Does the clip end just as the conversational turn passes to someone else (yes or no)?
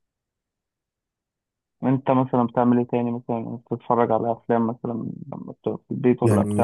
yes